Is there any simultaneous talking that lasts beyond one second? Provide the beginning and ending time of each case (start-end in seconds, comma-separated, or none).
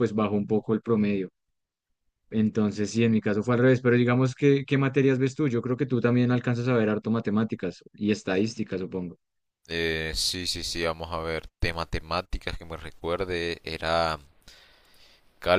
none